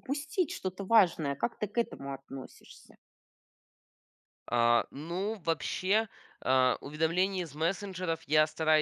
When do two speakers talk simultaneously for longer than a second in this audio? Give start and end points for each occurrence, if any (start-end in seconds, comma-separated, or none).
none